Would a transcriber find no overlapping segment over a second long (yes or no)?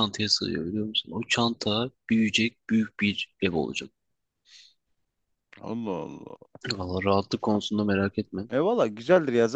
yes